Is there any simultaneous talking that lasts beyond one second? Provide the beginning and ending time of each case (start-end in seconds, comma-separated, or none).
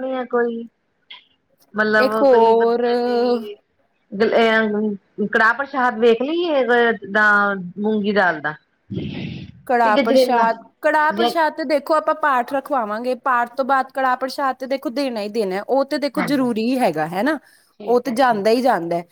2.0-3.4